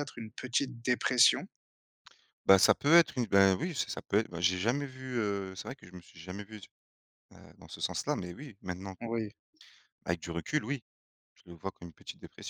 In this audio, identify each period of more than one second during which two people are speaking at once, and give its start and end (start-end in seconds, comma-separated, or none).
none